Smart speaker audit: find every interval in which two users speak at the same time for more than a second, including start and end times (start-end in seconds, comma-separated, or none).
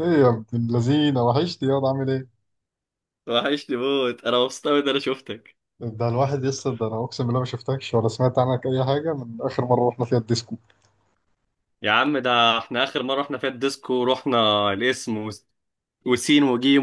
none